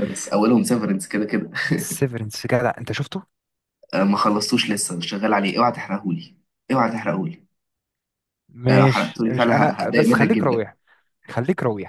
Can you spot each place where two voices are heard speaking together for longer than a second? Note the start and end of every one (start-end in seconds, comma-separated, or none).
8.7-10.7